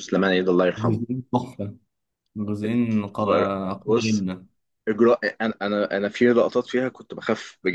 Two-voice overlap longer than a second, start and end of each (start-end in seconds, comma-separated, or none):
2.6-4.2